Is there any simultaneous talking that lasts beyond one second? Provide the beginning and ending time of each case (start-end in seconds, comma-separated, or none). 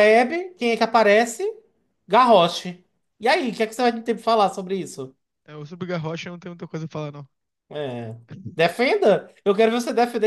none